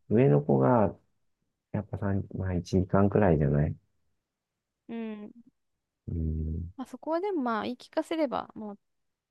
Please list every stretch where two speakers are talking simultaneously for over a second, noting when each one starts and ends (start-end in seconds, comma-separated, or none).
none